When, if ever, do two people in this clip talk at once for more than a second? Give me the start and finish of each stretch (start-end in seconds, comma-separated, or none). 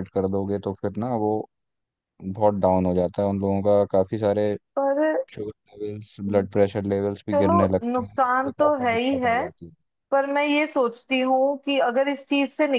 7.3-9.4